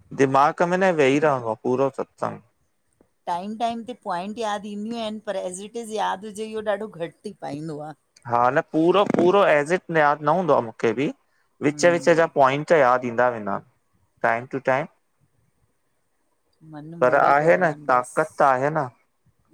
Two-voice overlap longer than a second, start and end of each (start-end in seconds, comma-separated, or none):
17.0-18.7